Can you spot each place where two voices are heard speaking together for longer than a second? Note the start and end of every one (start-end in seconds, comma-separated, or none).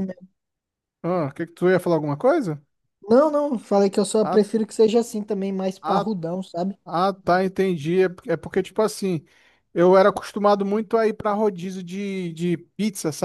none